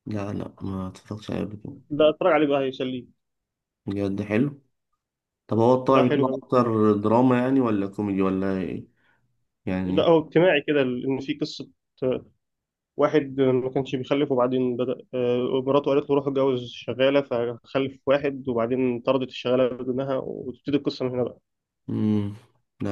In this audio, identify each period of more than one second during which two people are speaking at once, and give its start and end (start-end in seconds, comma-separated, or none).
none